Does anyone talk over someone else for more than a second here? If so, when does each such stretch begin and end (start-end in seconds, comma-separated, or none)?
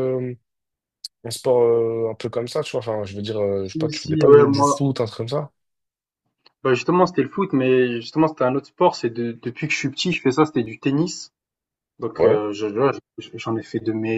3.6-4.8